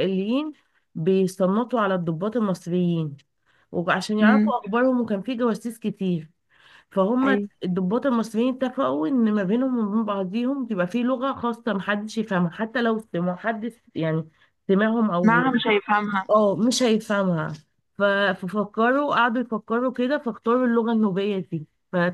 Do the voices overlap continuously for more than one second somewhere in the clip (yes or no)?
no